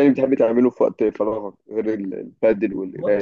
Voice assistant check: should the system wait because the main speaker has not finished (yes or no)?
no